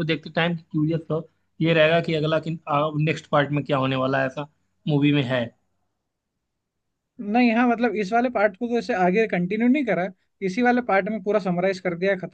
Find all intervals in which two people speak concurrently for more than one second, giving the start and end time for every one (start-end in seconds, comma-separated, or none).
none